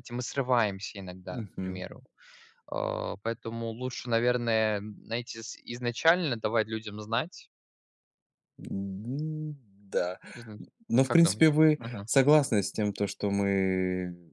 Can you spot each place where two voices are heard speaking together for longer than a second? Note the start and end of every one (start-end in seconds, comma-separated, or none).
none